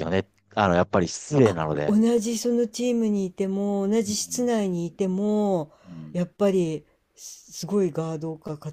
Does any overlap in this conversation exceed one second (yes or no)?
no